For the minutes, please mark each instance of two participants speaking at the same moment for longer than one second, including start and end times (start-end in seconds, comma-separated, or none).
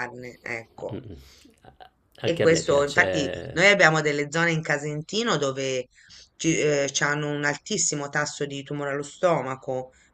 2.2-3.6